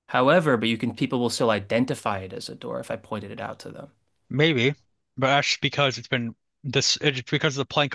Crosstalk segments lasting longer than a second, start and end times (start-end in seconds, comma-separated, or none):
none